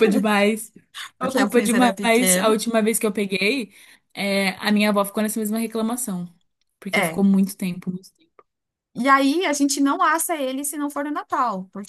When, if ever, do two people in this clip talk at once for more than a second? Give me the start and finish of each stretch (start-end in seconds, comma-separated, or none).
1.2-2.6